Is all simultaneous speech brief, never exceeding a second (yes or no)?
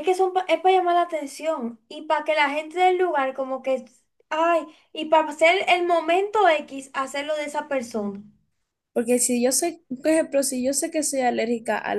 yes